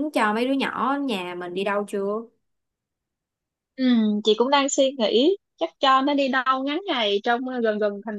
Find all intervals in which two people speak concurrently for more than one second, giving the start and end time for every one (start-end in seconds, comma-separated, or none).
none